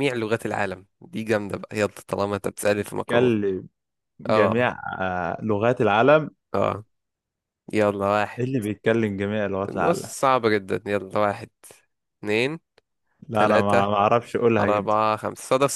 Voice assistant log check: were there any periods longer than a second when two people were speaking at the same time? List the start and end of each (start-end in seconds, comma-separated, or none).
none